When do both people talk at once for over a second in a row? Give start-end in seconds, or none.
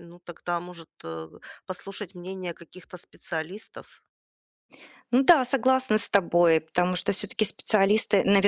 none